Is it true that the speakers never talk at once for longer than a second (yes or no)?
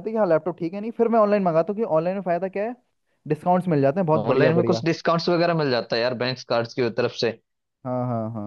yes